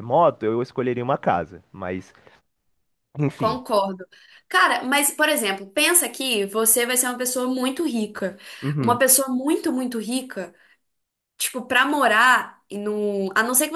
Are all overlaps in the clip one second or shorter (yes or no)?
yes